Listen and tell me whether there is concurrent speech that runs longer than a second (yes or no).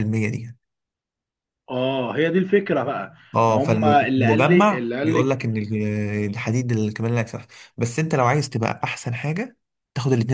yes